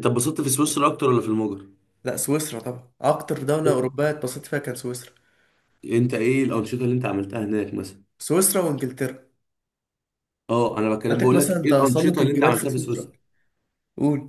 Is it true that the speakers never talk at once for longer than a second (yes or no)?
no